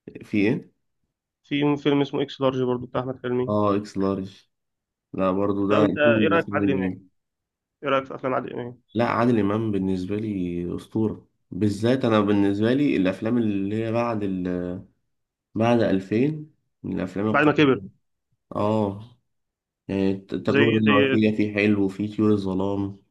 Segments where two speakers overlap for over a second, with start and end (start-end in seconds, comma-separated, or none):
5.7-7.0